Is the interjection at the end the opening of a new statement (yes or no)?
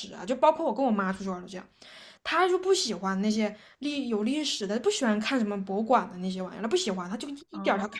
no